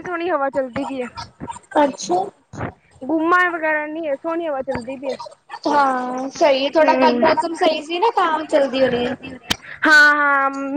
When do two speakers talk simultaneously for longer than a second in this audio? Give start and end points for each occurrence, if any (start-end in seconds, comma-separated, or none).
none